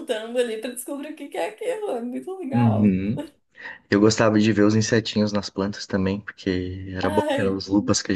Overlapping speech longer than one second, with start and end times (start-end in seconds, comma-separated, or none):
none